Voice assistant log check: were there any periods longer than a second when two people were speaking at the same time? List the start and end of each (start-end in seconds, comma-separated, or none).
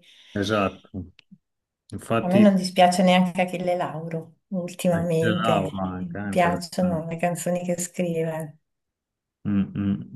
4.9-7.0